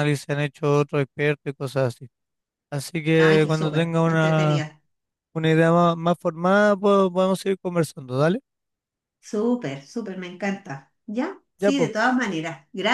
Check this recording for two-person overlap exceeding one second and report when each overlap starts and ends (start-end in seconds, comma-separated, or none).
3.2-4.6